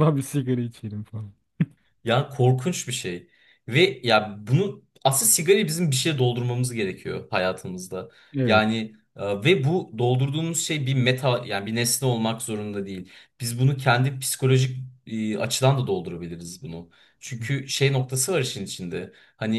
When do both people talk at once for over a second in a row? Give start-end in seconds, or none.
none